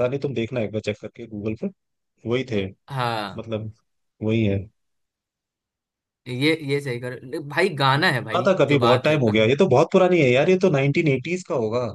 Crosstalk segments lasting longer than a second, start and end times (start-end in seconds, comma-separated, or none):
8.0-9.5